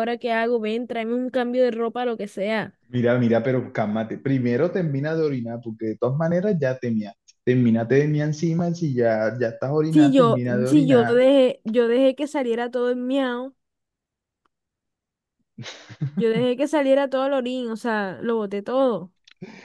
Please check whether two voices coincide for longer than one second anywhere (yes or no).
yes